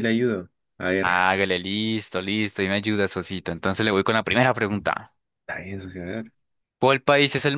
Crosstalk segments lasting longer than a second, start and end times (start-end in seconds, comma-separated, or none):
none